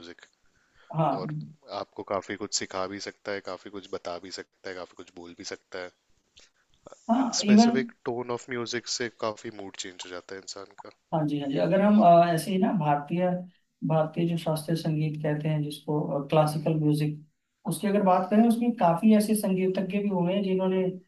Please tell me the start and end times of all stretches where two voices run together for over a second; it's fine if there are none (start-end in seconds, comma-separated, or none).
none